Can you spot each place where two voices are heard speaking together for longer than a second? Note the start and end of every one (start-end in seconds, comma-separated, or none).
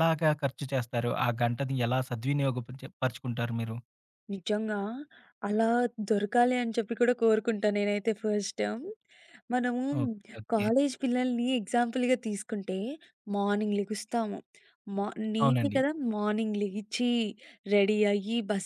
none